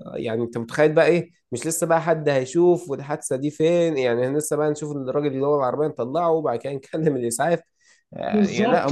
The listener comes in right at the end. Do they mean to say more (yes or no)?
yes